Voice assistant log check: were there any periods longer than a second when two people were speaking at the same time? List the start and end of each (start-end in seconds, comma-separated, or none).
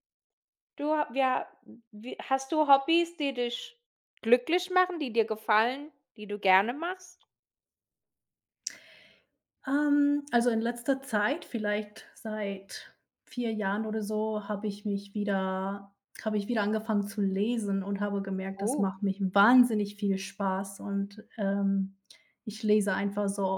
none